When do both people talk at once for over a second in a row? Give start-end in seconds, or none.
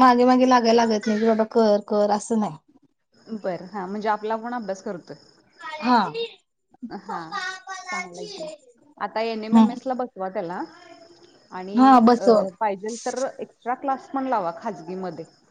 none